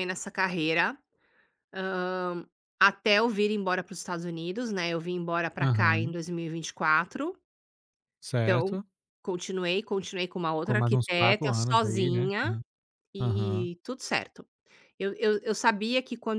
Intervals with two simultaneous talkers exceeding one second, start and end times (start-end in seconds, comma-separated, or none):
10.6-12.6